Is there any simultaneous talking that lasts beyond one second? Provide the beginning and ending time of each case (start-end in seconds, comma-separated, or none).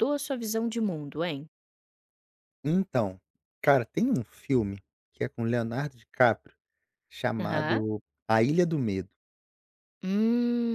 none